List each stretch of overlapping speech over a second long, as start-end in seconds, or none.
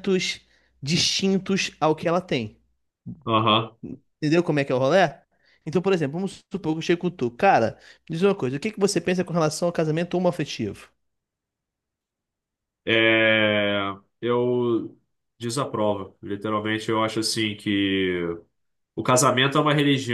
none